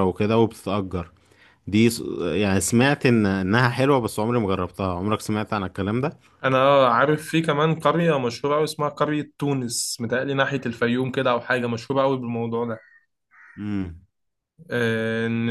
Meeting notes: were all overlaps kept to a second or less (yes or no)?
yes